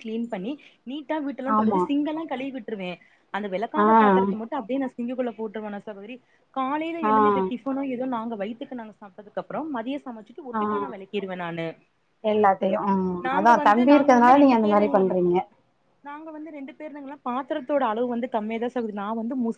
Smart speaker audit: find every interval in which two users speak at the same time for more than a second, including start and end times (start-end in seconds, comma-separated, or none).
13.4-15.1